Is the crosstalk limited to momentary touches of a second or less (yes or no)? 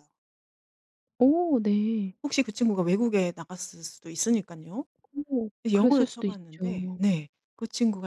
no